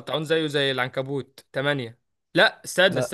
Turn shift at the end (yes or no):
no